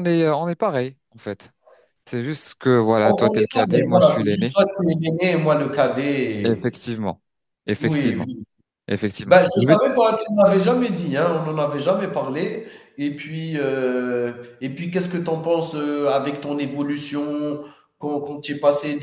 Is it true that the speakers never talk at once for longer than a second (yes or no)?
no